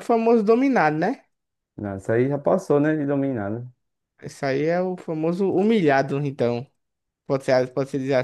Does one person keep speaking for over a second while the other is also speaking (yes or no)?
no